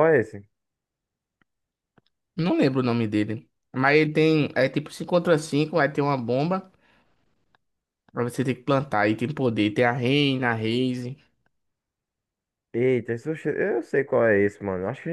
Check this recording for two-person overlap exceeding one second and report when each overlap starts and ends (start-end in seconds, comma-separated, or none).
none